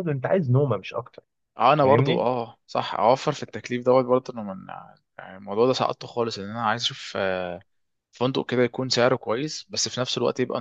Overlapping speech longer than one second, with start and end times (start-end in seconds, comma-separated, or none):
none